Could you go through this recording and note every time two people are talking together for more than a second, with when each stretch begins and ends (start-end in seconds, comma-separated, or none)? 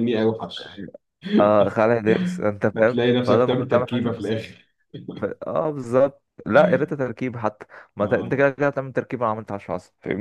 2.7-4.4